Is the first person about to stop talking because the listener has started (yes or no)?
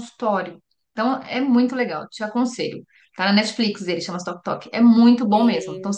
no